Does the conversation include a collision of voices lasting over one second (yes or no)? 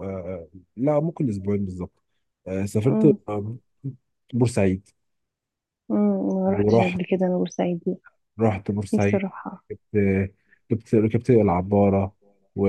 no